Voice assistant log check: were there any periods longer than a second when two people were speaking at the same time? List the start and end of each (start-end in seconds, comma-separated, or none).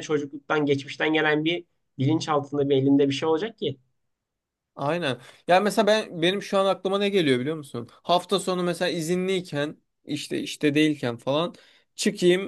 none